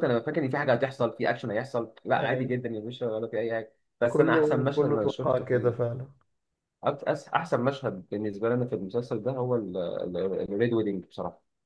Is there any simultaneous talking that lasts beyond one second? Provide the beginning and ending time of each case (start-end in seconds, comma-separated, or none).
4.1-5.8